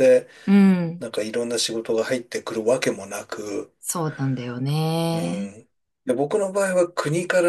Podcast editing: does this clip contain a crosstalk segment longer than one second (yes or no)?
no